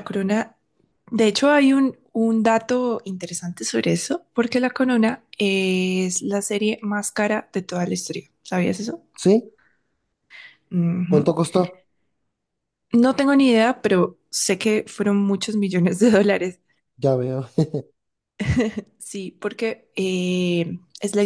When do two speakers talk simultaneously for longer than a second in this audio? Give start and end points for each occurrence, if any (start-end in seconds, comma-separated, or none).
none